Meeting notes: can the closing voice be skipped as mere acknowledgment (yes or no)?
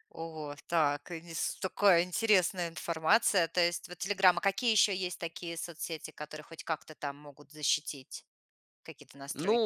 no